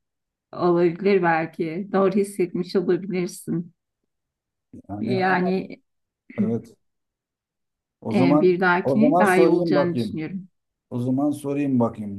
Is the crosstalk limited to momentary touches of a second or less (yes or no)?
no